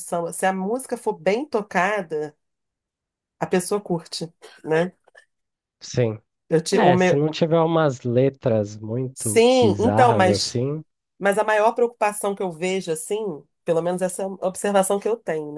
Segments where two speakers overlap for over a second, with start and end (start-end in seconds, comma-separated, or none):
9.1-10.6